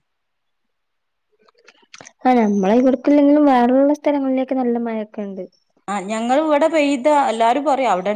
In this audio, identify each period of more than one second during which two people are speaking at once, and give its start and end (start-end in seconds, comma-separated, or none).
none